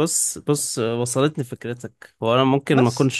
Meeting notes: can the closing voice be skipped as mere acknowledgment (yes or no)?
yes